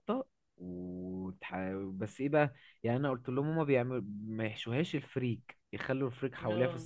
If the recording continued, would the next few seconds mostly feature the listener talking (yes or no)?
no